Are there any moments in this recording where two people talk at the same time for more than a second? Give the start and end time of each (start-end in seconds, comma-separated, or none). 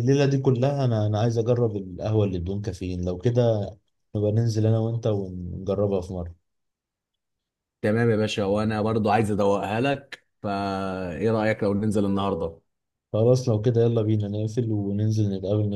none